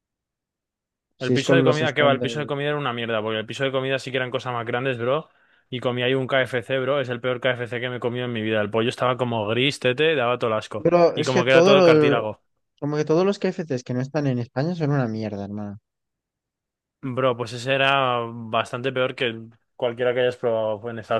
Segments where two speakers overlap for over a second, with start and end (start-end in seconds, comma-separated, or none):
1.2-2.5, 10.8-12.2